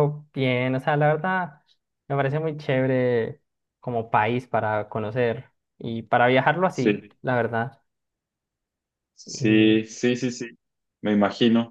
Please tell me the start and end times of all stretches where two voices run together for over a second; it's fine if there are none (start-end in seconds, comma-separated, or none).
none